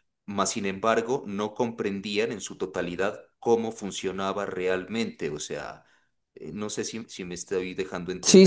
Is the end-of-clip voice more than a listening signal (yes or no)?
yes